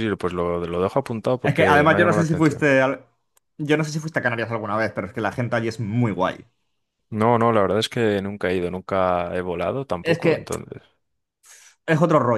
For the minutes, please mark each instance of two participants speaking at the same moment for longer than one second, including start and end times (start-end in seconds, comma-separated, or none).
1.4-2.7